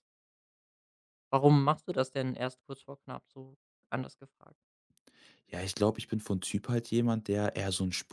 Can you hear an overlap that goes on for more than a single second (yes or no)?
no